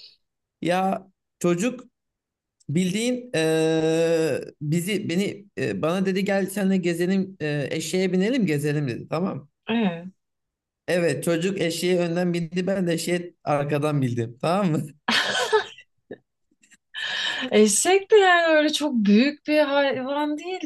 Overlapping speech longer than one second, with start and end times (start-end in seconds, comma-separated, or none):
none